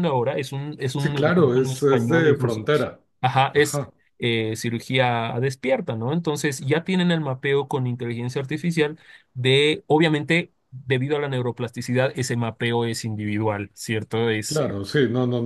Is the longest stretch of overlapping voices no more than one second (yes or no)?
no